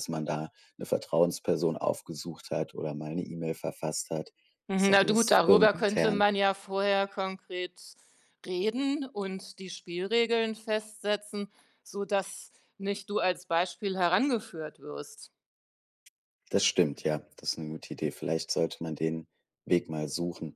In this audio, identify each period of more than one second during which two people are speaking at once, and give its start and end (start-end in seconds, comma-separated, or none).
4.8-6.2